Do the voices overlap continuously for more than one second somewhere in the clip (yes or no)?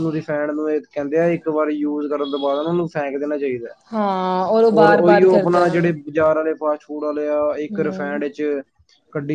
no